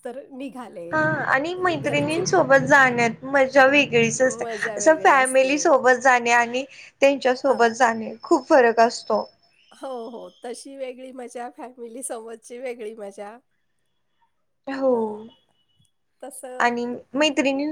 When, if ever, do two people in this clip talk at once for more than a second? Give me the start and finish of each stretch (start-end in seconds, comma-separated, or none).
none